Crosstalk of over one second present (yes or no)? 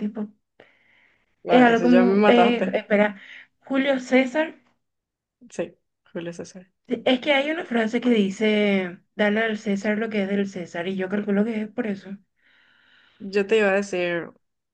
yes